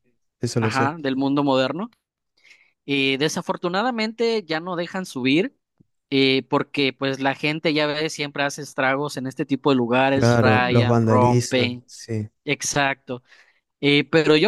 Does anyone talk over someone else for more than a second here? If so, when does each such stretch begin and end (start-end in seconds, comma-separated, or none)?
10.1-11.8